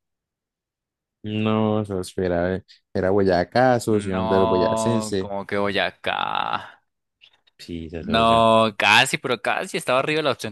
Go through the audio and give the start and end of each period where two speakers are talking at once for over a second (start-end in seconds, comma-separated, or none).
3.9-5.3